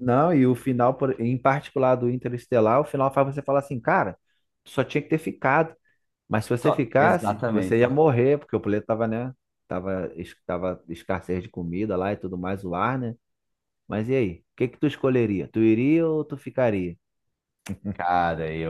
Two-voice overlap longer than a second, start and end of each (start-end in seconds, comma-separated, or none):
6.6-8.0